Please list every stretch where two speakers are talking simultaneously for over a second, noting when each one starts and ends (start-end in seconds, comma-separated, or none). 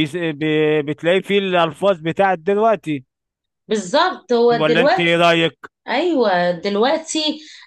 none